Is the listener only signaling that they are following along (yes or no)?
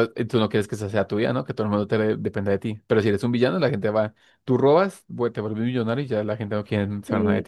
no